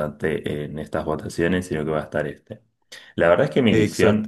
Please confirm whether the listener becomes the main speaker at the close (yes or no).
no